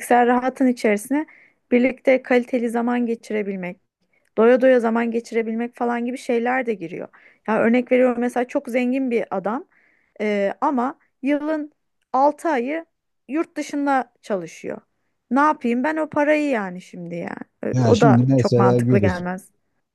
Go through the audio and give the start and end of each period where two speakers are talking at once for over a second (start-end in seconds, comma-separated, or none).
17.7-19.2